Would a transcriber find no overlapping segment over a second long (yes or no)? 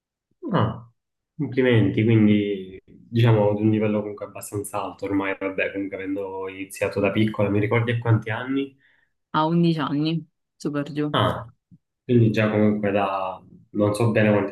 yes